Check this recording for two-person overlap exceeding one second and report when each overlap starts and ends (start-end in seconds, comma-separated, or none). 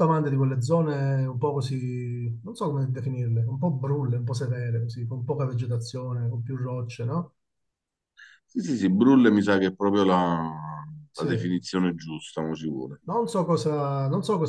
none